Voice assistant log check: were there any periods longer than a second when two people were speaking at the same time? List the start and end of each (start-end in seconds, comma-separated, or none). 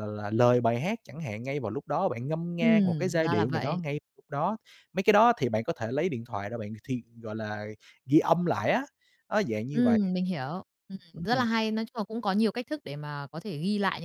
2.6-3.8